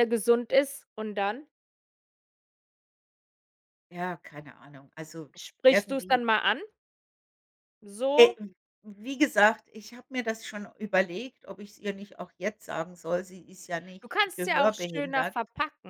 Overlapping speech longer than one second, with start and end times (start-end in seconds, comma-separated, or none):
14.0-15.4